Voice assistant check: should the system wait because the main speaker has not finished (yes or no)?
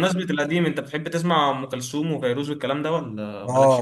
no